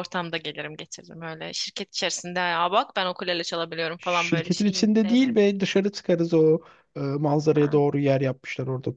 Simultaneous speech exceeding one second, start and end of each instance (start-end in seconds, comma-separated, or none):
4.0-5.4